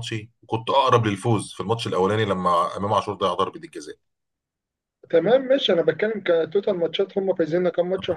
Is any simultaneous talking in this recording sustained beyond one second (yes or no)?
no